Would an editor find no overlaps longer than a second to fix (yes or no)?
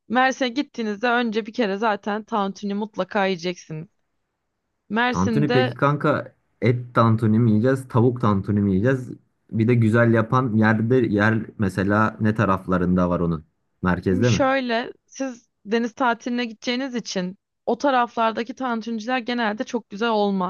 yes